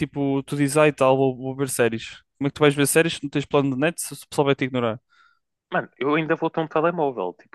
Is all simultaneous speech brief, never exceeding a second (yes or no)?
yes